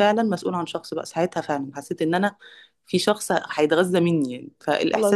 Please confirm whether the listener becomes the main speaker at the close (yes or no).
no